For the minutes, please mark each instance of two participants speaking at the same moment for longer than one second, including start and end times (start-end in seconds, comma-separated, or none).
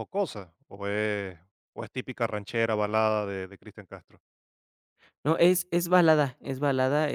none